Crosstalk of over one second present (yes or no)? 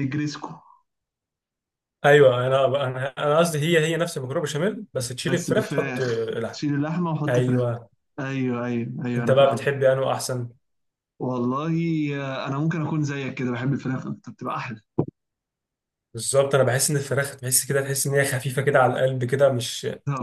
yes